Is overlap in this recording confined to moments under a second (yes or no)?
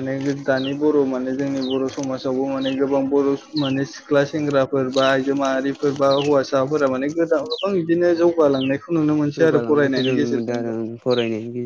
no